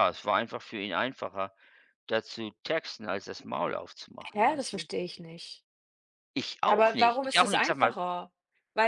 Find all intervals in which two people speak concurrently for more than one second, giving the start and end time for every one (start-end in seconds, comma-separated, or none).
6.7-8.0